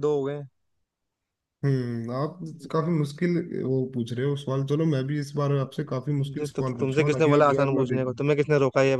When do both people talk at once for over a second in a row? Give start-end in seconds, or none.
5.6-8.0